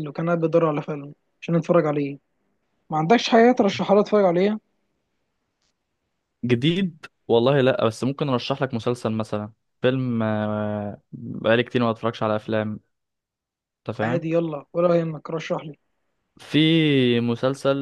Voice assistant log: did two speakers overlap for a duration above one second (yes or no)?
no